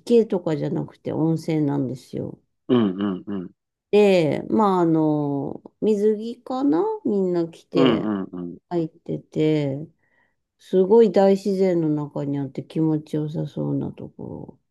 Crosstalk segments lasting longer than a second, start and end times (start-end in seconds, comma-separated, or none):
none